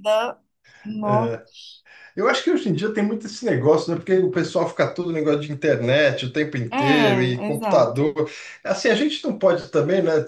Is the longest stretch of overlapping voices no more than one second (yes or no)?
no